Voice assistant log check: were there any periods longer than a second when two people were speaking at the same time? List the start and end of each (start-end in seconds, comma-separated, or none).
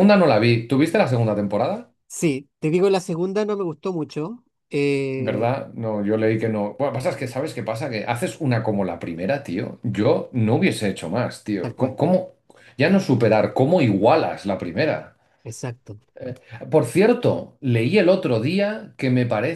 none